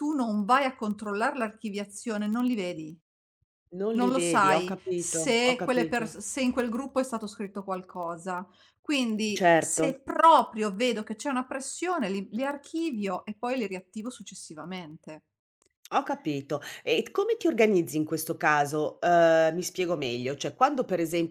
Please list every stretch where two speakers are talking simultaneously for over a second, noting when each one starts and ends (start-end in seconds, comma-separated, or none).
4.0-6.1